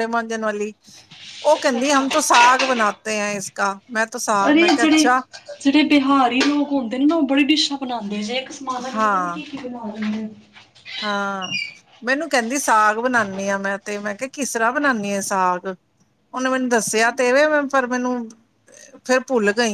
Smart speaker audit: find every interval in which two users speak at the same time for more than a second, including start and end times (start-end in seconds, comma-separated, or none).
none